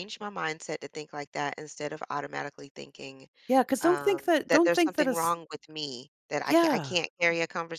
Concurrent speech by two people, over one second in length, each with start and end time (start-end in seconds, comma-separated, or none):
3.8-5.4